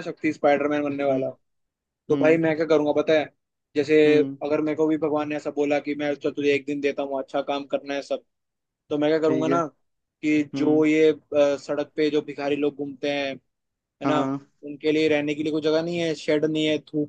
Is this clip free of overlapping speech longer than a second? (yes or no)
yes